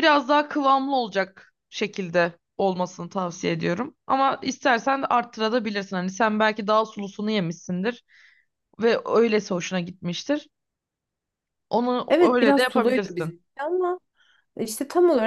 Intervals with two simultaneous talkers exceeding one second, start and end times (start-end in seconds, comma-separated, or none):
12.1-13.3